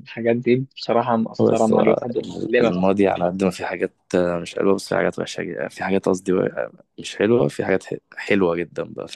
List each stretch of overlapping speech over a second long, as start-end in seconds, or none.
1.4-2.9